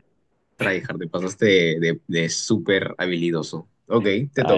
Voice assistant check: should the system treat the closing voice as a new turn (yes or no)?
yes